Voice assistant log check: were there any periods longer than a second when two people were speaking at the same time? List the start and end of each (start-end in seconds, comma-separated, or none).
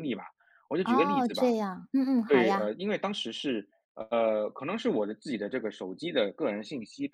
none